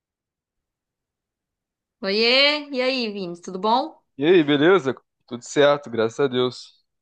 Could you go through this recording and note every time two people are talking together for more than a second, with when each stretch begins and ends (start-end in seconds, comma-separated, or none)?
none